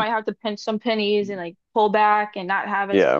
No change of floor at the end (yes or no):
yes